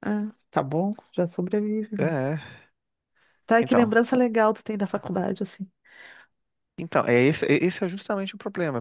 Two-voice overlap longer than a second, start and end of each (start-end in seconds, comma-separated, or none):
none